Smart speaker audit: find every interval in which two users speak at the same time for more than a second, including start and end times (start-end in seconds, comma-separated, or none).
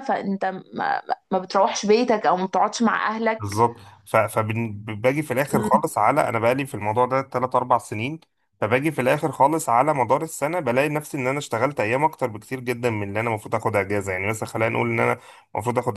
none